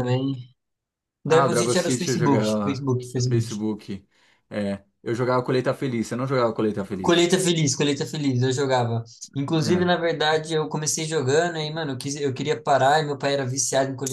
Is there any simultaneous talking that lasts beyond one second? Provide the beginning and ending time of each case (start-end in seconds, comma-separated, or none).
1.3-3.5